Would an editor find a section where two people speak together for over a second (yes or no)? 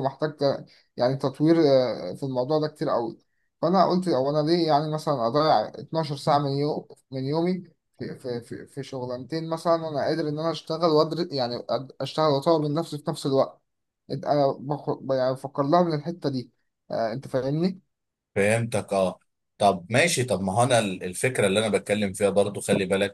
no